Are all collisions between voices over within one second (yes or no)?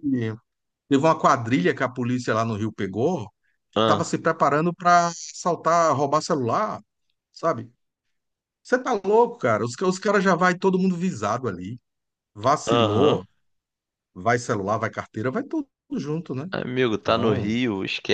yes